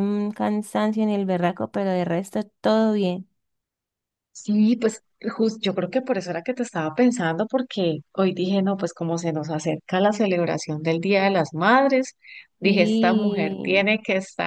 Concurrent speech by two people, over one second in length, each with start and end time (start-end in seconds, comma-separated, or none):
12.6-13.9